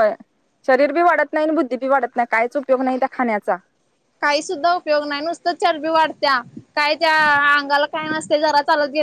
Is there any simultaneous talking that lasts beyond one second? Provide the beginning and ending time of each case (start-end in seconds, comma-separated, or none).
none